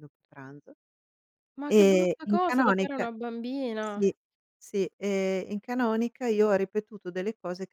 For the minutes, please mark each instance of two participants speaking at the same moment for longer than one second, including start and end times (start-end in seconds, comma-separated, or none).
1.7-3.1